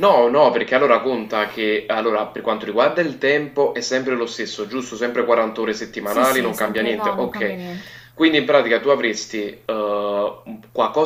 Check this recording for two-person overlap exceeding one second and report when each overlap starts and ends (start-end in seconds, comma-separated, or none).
6.0-7.5